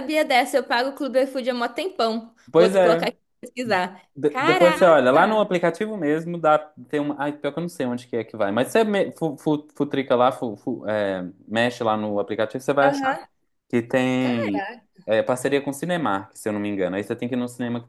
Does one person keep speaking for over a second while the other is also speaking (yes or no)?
yes